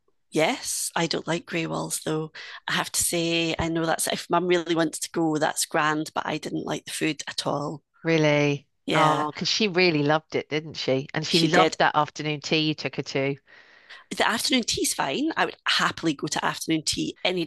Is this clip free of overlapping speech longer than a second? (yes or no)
yes